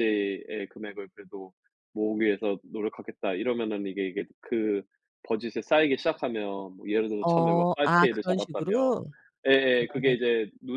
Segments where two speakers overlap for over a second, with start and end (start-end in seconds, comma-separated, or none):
7.2-9.0